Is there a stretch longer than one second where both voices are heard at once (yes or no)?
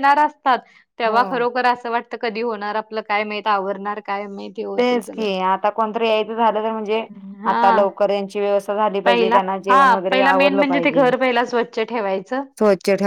yes